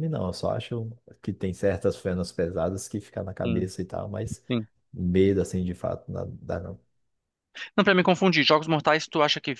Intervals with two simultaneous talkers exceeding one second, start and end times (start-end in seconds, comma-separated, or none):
none